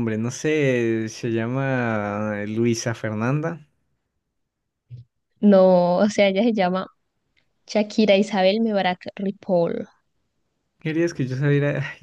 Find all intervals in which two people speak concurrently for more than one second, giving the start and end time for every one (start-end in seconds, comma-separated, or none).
none